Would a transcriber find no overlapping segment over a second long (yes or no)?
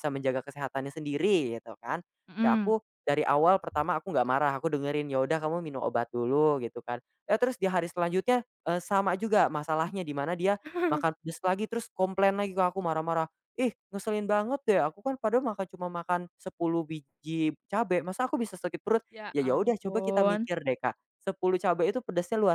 no